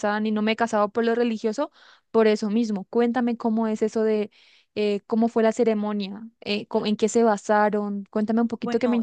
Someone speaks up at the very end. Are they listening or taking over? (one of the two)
taking over